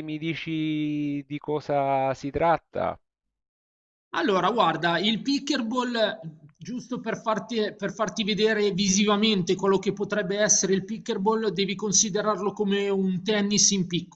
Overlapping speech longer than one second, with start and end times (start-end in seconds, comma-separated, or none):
none